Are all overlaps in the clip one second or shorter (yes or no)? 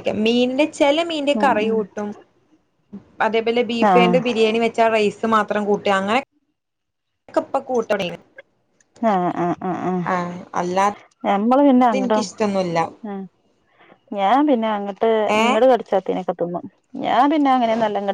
yes